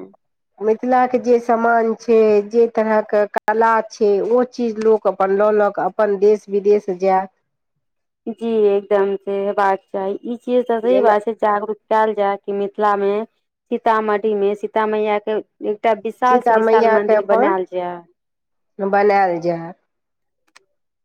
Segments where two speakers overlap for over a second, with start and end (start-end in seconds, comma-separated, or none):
none